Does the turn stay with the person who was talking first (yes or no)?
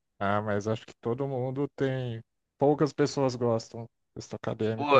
no